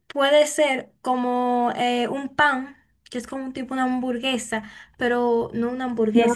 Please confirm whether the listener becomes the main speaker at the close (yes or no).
yes